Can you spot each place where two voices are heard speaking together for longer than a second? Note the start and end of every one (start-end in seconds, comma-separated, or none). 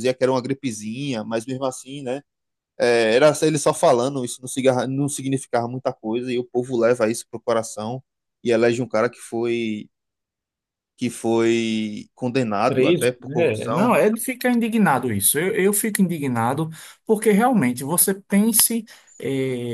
12.7-14.0